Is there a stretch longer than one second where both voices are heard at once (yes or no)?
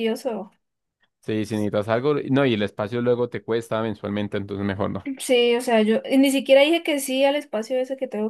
no